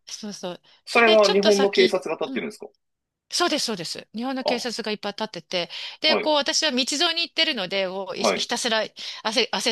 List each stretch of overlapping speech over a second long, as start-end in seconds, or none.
1.0-2.5